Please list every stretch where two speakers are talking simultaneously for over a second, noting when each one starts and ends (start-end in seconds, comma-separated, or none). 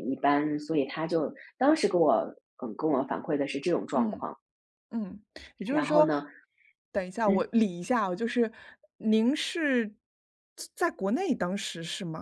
none